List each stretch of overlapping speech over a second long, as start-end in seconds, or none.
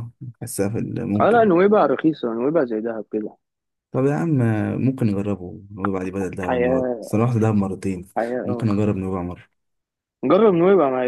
none